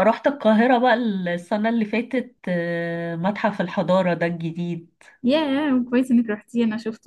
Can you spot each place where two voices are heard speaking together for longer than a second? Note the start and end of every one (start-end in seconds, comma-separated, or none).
none